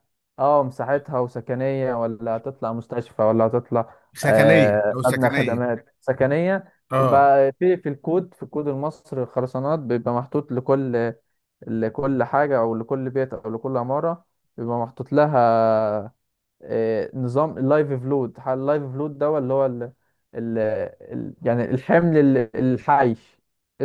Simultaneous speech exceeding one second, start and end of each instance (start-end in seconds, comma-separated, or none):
4.1-5.6